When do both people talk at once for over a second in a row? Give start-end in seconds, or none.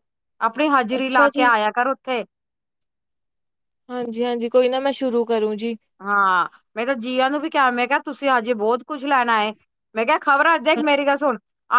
none